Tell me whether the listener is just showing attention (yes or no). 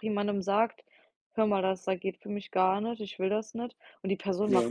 yes